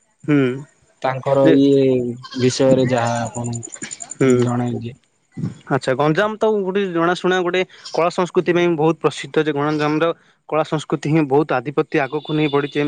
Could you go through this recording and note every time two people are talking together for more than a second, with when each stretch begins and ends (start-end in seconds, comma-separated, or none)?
none